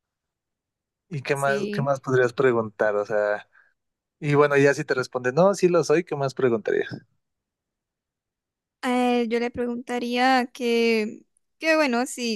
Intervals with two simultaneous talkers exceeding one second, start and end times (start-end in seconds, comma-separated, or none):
none